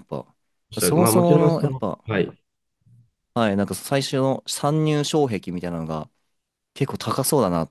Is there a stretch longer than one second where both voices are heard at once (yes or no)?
yes